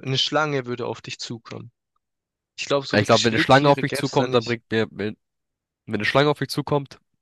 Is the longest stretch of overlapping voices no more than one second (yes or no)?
no